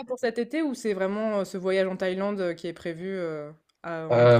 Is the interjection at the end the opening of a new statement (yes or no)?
yes